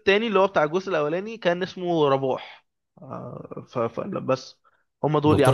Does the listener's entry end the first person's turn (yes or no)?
yes